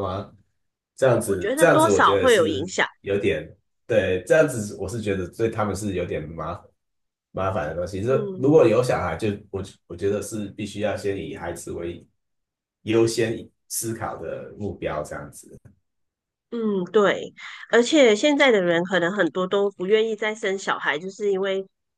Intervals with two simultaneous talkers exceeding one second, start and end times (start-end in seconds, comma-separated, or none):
1.2-2.9